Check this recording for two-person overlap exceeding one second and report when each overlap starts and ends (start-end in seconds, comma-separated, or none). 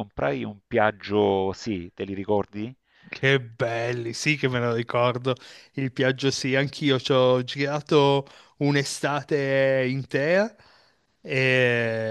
none